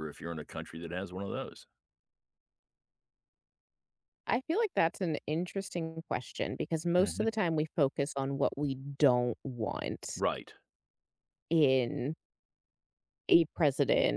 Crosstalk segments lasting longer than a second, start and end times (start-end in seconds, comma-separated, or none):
none